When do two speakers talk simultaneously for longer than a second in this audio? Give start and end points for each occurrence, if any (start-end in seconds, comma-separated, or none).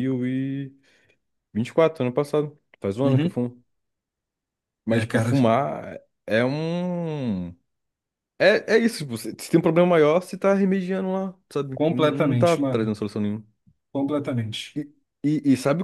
11.7-13.0